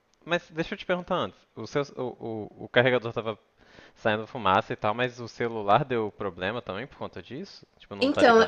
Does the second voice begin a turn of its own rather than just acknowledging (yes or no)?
yes